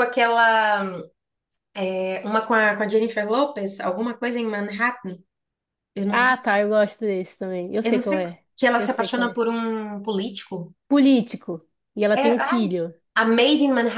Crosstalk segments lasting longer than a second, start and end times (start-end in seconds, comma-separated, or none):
7.8-9.4